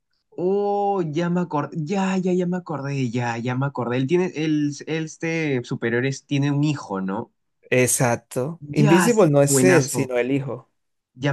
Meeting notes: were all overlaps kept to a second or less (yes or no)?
no